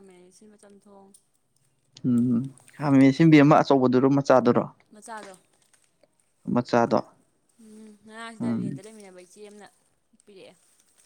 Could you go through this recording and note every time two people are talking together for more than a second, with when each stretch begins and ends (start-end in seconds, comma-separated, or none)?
none